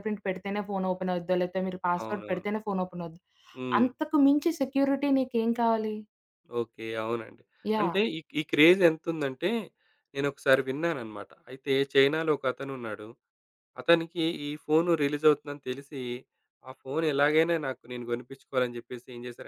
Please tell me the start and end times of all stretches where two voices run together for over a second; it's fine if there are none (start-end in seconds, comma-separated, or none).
none